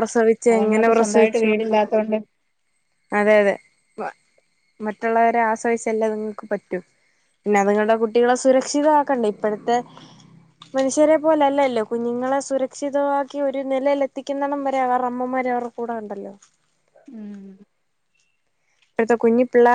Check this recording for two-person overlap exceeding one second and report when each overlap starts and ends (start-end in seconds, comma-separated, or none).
0.5-2.1